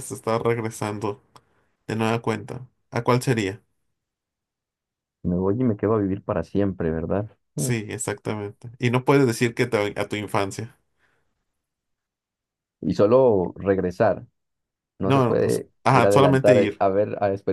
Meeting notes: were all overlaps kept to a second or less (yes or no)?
no